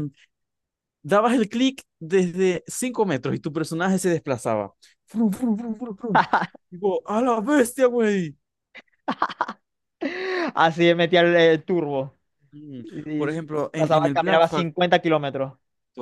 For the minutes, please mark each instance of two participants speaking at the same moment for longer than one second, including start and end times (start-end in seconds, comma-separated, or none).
12.8-14.7